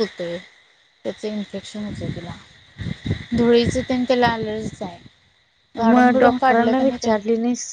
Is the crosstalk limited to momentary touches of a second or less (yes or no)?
no